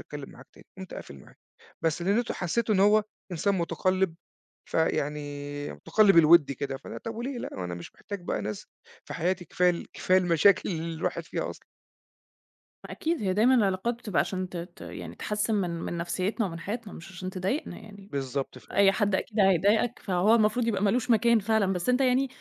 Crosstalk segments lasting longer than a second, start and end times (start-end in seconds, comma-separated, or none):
none